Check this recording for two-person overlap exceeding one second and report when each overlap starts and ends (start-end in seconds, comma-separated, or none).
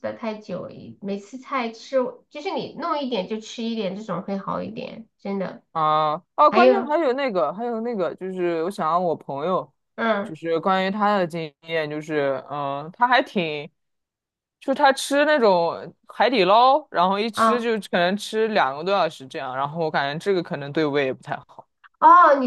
none